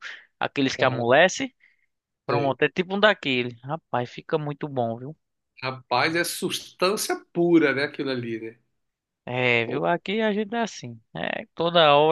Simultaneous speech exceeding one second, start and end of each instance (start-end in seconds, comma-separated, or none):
none